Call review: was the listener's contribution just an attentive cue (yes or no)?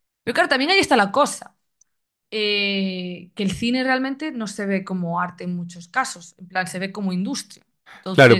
no